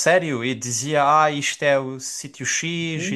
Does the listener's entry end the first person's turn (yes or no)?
yes